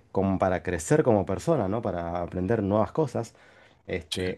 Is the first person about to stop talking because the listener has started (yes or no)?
no